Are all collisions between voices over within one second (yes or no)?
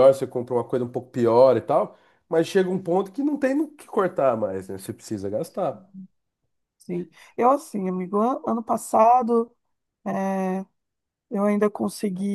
yes